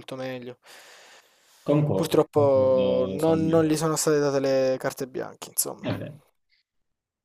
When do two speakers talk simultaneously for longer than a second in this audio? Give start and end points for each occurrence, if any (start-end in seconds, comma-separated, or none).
1.9-3.7